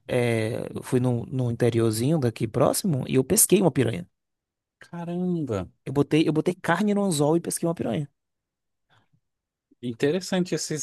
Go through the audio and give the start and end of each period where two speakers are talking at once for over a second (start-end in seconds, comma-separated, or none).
none